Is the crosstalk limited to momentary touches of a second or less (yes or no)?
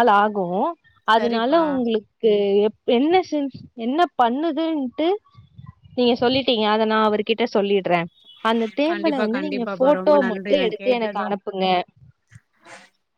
no